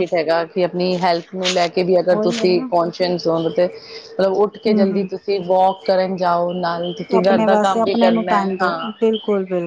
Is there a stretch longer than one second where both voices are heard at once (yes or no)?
yes